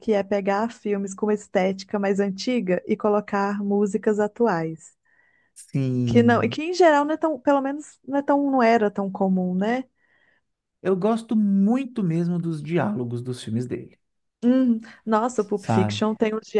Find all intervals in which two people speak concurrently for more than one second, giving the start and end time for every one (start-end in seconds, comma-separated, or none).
none